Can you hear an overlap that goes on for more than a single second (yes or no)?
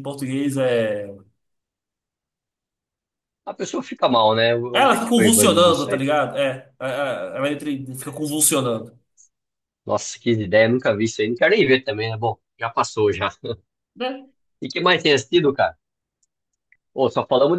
yes